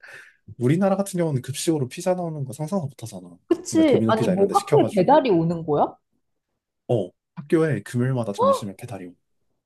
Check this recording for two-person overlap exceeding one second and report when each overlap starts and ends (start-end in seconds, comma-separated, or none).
3.5-5.3